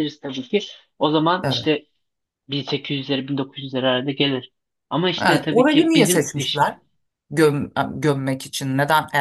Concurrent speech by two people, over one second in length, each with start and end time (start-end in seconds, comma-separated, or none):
5.2-6.7